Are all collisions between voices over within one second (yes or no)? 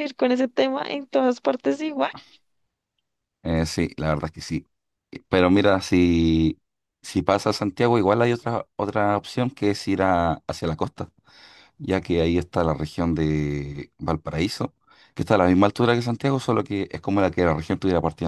yes